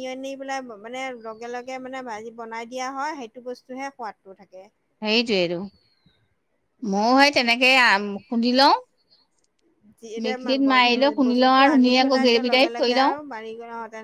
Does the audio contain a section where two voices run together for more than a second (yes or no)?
yes